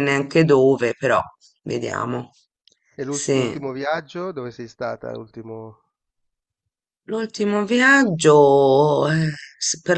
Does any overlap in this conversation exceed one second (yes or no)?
no